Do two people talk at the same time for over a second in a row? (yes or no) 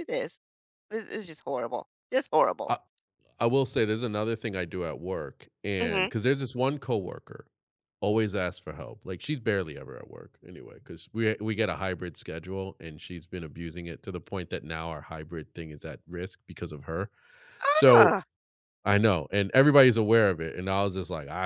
no